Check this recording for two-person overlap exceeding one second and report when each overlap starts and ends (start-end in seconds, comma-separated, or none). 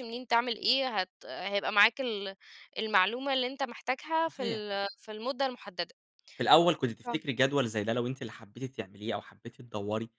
none